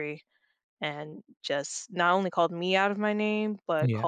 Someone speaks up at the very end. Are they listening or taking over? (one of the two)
listening